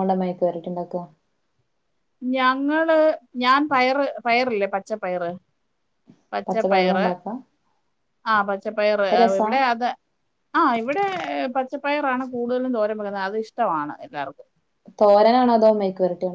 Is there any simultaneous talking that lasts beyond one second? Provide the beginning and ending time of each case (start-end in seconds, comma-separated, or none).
none